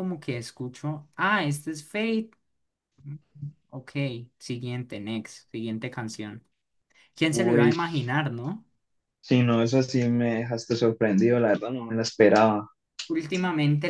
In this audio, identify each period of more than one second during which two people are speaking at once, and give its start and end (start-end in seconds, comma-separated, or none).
none